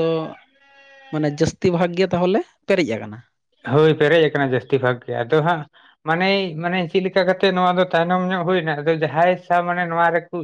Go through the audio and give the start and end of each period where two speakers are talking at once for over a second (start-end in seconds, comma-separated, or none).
none